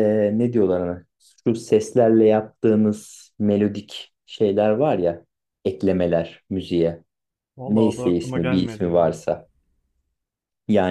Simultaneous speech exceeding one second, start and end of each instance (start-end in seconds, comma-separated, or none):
7.7-9.2